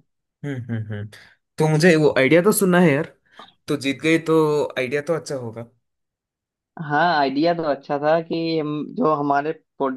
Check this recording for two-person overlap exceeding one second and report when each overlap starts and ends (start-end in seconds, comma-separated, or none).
none